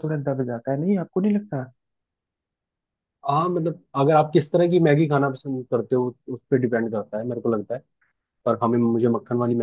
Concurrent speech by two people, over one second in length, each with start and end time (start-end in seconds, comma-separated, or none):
none